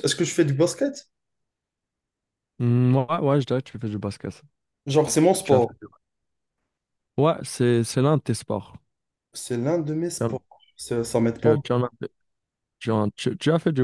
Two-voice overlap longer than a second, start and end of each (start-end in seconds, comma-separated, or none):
none